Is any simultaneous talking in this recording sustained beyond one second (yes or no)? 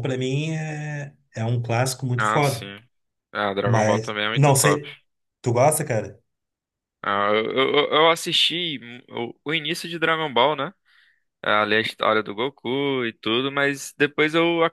yes